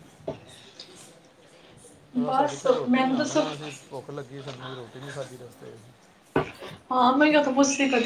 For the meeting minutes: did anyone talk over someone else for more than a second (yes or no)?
yes